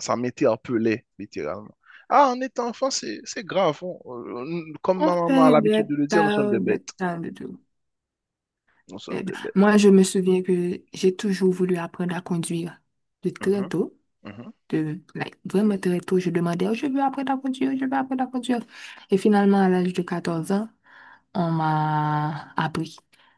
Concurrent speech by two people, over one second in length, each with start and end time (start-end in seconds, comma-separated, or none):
5.0-6.9